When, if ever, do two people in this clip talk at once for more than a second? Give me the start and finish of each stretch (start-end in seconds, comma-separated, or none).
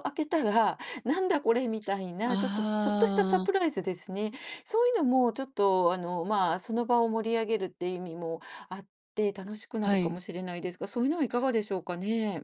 2.2-3.6